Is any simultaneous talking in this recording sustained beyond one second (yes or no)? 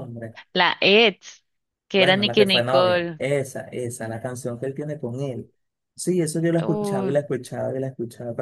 yes